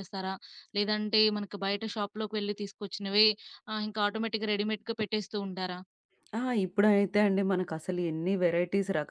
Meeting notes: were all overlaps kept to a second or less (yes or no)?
yes